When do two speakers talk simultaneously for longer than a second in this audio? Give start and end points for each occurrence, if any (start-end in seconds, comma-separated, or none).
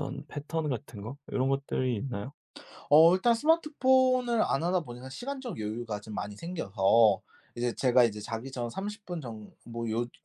none